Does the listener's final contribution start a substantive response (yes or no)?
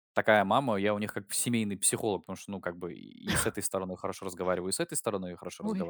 yes